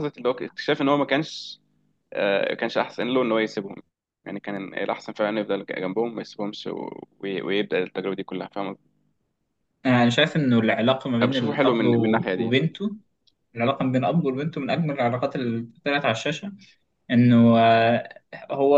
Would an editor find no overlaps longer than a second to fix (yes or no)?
no